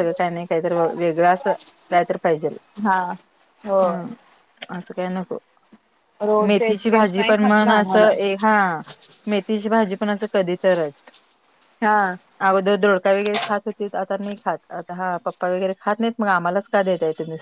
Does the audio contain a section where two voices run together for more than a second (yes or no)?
yes